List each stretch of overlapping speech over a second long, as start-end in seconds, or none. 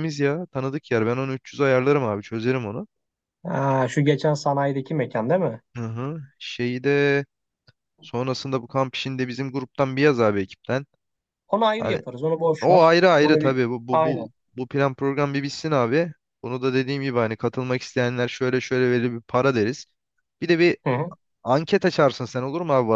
12.6-14.3